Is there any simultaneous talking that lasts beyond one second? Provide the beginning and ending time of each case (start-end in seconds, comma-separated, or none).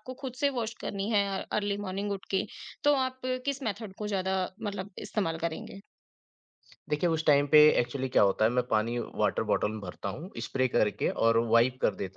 none